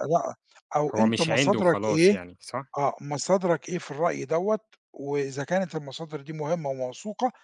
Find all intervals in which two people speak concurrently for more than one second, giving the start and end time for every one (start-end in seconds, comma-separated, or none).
0.9-2.2